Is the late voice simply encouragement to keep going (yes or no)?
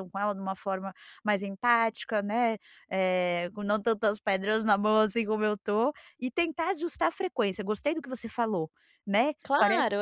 no